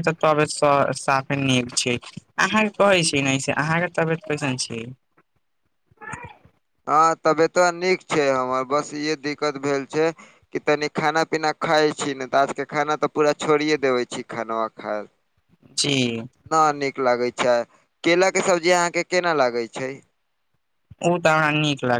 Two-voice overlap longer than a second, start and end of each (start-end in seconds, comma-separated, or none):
none